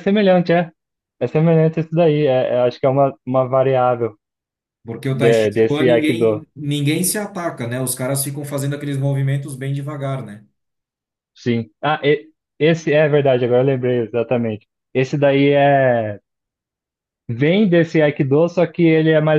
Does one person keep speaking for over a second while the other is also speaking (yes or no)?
yes